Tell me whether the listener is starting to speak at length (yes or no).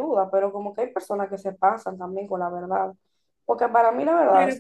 no